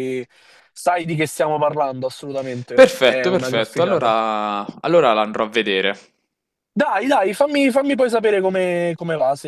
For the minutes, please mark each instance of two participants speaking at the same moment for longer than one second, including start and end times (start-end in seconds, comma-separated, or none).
2.7-4.1